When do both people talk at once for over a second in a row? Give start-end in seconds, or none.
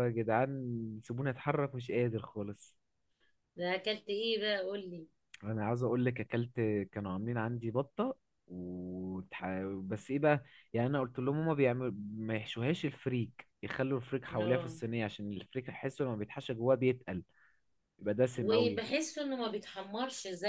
none